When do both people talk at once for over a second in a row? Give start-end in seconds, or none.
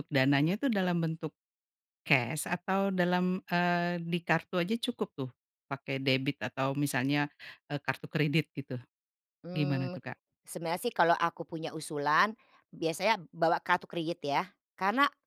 none